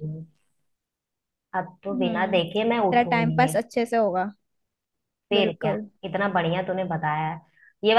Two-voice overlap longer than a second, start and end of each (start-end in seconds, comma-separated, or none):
1.9-3.6